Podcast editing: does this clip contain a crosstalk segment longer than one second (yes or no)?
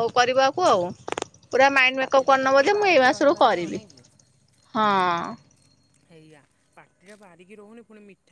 yes